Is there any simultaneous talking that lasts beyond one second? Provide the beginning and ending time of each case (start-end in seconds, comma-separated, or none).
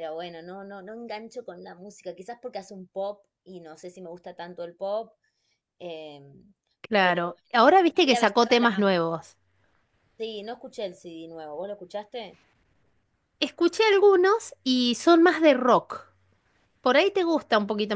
7.0-8.9